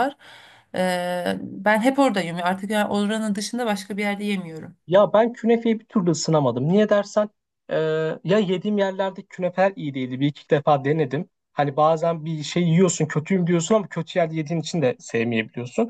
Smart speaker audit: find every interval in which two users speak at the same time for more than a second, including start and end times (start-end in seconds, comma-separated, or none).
none